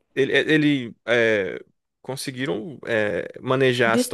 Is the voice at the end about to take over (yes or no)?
no